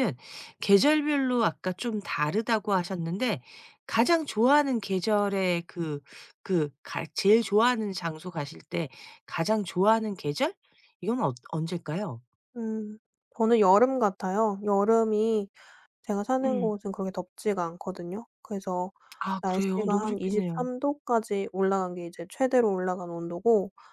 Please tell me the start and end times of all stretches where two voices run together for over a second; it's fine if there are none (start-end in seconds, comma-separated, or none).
19.4-20.7